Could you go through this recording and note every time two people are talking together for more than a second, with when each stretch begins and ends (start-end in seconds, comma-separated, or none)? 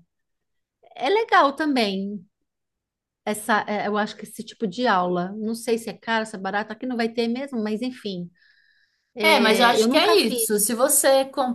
9.2-10.5